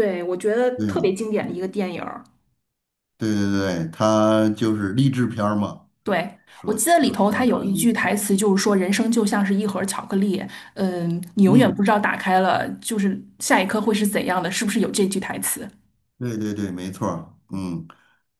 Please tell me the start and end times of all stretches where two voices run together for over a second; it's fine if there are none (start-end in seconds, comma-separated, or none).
6.5-7.9